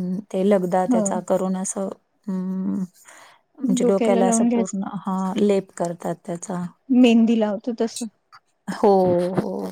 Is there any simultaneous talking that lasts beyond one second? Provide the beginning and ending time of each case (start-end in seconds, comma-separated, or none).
none